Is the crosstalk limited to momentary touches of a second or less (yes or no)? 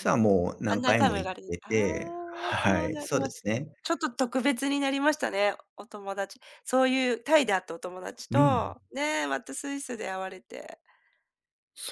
no